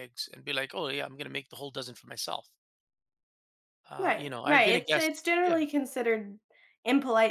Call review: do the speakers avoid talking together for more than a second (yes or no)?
no